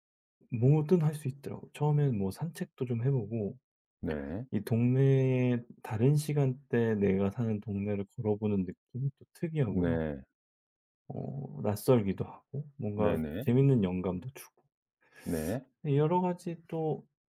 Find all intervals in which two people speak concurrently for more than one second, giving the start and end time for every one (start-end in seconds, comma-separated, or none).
none